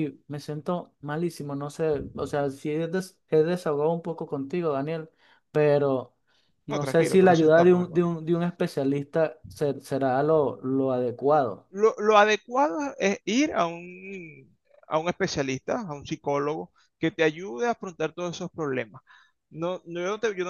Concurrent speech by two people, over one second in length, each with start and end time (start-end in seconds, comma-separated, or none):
6.7-8.1